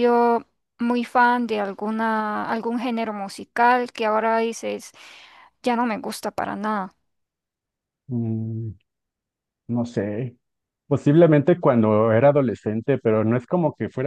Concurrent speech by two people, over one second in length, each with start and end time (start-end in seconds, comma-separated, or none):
none